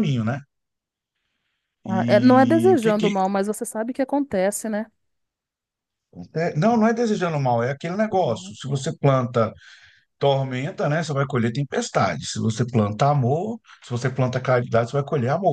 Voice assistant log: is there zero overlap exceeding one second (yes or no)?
no